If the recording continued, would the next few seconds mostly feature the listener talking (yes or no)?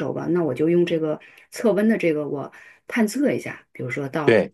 no